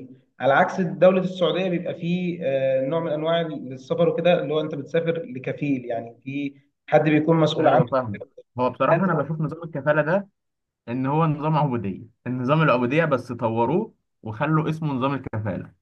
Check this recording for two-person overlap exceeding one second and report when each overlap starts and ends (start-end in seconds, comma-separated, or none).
none